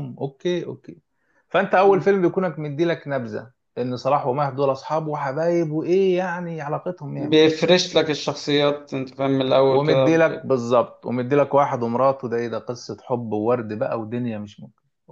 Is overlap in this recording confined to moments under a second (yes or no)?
yes